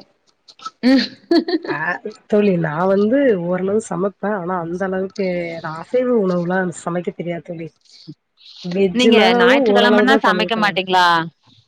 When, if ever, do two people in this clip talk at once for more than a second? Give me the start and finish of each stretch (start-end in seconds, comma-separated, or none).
9.0-10.8